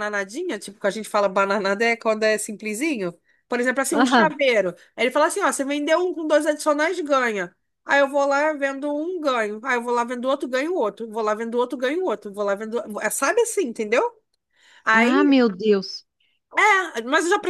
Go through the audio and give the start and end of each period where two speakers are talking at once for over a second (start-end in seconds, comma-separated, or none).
none